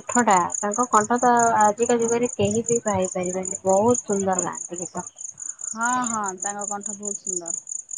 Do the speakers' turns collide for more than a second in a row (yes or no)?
no